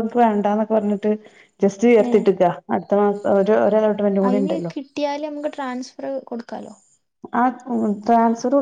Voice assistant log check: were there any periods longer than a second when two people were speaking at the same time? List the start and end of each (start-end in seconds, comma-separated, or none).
none